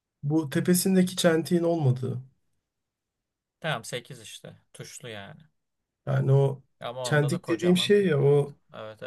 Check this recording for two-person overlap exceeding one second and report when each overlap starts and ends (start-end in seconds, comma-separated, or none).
7.0-8.6